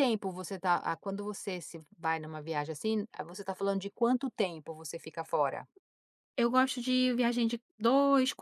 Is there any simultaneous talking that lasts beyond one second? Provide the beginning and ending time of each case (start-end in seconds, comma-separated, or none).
none